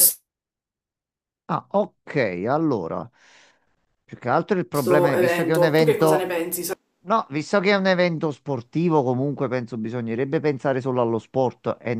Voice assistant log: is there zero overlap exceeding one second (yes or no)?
no